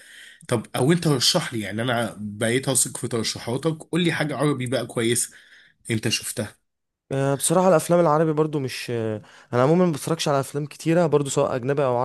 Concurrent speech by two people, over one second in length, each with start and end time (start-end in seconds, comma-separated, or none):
none